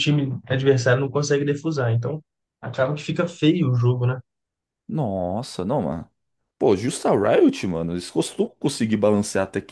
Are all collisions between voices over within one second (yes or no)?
yes